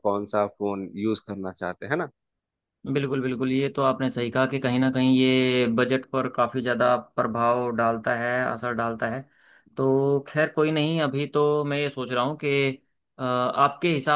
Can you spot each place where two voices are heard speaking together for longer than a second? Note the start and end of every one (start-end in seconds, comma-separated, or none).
none